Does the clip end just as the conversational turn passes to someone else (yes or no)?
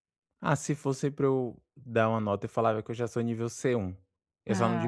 no